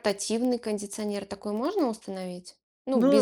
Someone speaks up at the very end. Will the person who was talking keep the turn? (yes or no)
yes